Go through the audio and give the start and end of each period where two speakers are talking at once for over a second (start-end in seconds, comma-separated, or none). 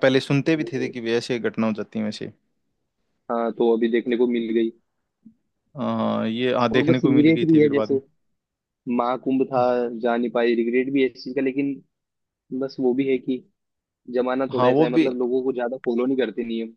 6.7-8.0